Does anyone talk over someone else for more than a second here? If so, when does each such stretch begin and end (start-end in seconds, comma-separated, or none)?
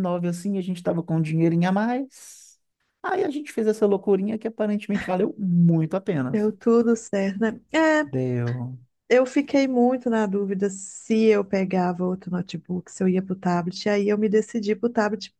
none